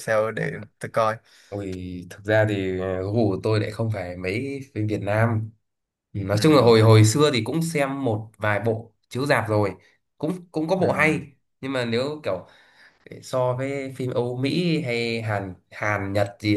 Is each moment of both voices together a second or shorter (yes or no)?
yes